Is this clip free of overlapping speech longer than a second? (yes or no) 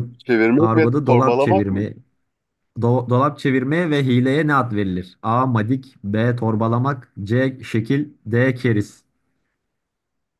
no